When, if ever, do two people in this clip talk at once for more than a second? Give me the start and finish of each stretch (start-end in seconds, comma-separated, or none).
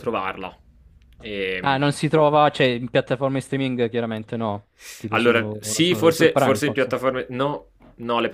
5.1-7.0